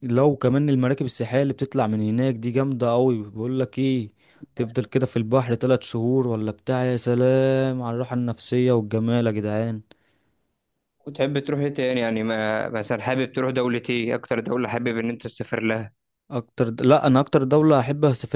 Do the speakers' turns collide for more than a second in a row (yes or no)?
no